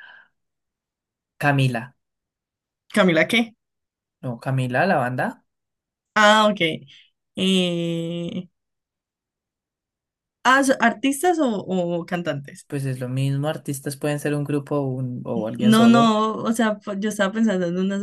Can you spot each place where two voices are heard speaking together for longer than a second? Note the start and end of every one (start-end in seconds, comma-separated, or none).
none